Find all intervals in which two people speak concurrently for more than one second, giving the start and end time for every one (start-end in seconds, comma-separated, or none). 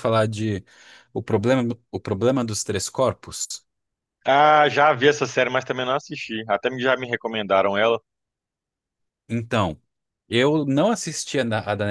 none